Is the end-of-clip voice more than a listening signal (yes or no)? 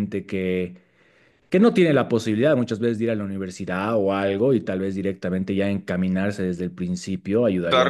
yes